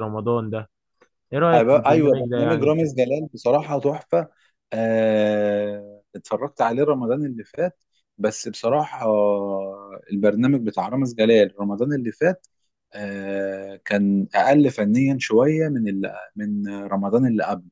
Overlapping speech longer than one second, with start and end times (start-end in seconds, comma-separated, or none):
1.6-2.9